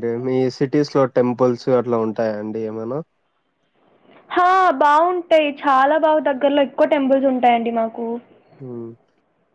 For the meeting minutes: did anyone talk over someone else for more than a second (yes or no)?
no